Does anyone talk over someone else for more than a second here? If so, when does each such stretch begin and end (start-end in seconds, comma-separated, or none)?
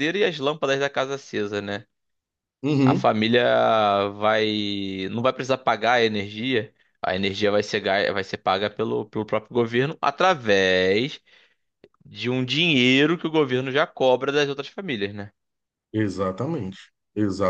none